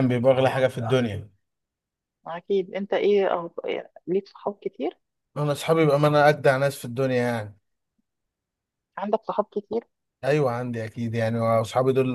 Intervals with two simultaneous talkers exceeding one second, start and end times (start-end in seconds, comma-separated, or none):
none